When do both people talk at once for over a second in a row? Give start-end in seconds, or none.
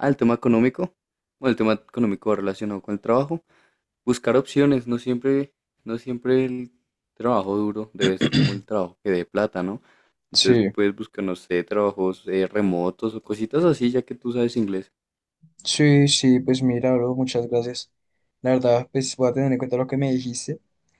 none